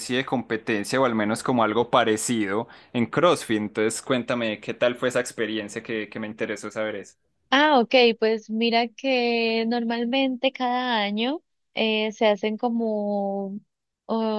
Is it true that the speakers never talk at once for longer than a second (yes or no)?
yes